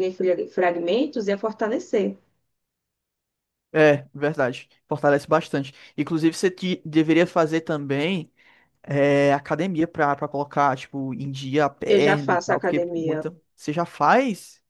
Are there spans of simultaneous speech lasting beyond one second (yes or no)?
yes